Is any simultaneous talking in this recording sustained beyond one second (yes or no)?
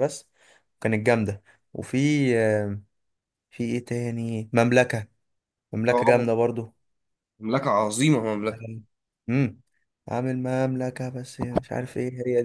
no